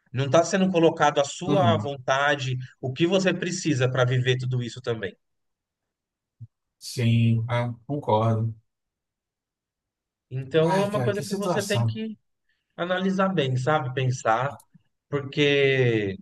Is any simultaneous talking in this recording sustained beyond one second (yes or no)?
yes